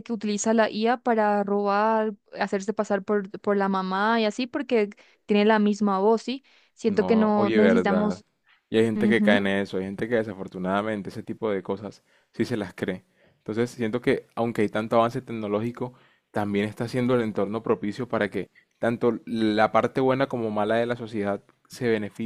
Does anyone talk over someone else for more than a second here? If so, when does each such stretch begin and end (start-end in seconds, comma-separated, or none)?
6.9-8.2